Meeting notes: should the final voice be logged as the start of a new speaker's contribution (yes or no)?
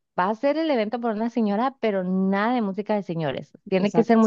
no